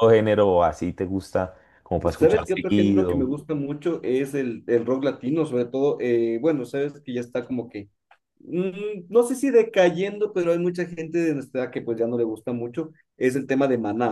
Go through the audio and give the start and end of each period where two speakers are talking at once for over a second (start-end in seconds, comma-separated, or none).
2.0-3.3